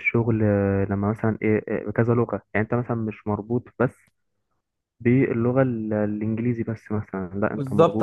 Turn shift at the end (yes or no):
yes